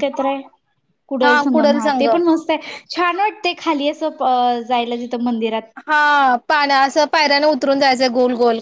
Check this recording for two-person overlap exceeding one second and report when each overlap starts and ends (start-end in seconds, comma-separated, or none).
none